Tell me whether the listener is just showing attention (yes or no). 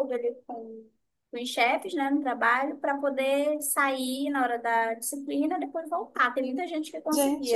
no